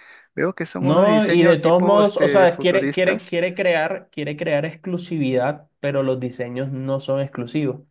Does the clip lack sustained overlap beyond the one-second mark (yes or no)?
no